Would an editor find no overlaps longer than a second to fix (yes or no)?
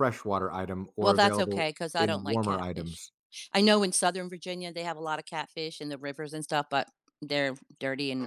no